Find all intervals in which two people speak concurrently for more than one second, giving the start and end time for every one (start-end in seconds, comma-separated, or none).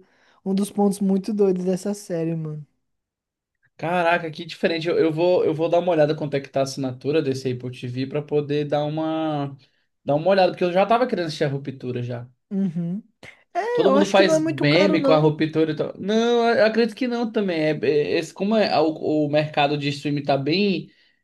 13.7-15.3